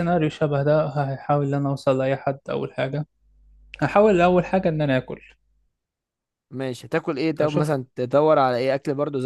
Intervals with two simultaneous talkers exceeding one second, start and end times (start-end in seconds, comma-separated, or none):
none